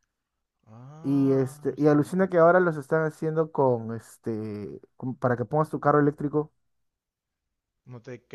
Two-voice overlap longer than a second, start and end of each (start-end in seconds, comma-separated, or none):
1.0-2.3